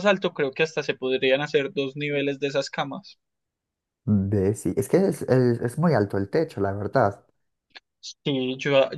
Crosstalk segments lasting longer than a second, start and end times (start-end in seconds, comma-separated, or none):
none